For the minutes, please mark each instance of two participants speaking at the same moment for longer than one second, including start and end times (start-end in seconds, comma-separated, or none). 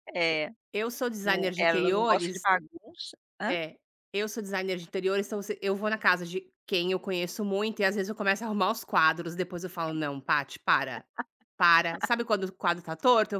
1.2-2.5